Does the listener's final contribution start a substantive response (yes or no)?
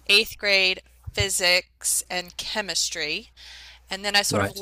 no